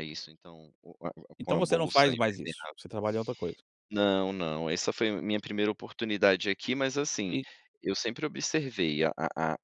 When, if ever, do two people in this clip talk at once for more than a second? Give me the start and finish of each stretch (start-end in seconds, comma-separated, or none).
1.4-2.8